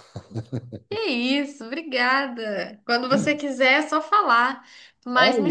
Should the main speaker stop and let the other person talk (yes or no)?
no